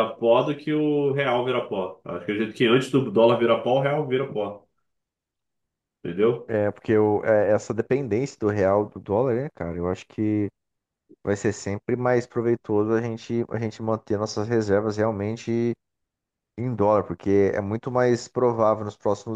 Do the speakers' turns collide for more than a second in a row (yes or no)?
no